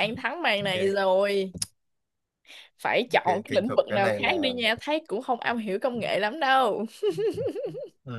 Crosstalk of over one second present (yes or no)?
yes